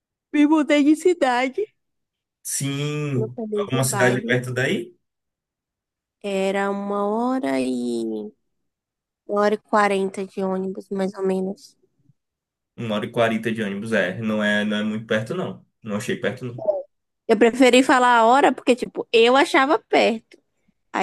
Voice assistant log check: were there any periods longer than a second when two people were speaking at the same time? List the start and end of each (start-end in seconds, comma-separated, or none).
3.1-4.4